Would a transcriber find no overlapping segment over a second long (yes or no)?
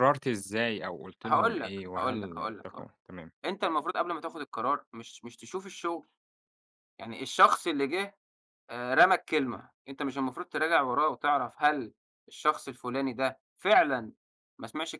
no